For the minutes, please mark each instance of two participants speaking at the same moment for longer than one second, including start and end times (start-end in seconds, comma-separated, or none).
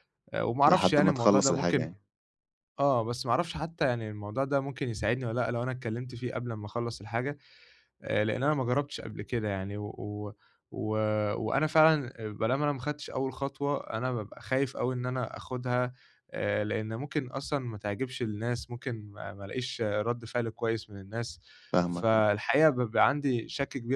0.6-1.9